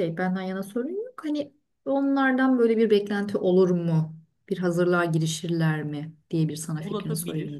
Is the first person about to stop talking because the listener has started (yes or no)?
yes